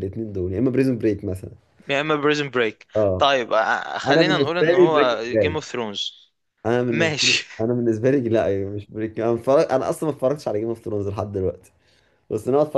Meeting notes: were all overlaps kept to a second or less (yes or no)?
no